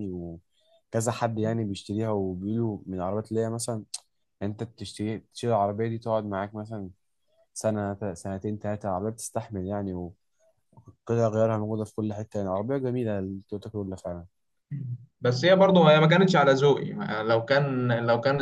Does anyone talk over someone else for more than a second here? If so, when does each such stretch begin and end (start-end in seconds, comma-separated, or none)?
none